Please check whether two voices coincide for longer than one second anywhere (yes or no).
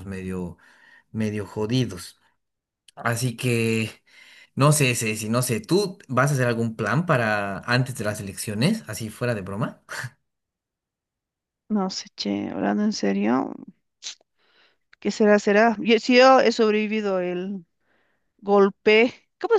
no